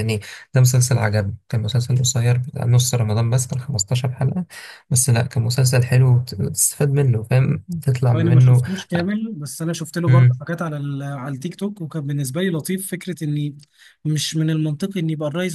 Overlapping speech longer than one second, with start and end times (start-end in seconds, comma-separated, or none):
none